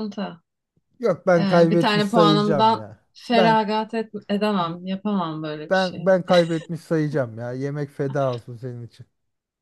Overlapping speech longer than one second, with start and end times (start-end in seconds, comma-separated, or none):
1.4-3.6